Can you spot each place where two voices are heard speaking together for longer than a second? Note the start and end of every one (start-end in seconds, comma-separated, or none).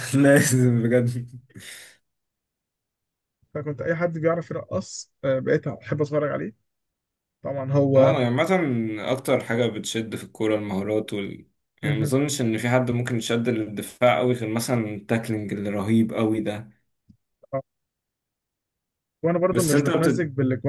none